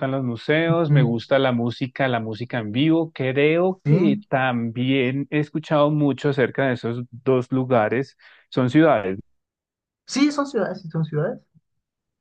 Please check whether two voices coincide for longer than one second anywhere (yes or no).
no